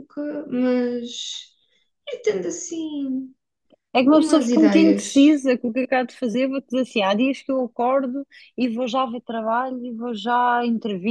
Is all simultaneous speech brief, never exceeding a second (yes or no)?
no